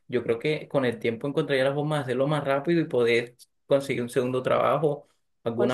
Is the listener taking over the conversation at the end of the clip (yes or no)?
no